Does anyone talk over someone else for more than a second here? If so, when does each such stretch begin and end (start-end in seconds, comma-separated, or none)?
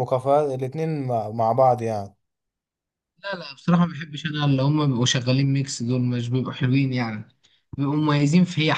none